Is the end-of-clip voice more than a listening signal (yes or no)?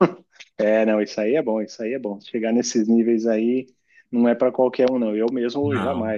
no